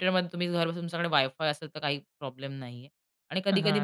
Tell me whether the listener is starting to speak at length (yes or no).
no